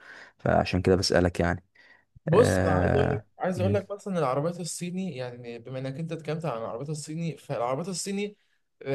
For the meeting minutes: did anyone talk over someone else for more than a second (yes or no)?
yes